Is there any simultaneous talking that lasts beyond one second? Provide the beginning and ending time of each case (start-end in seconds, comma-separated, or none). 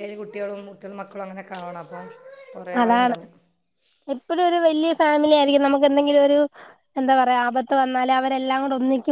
none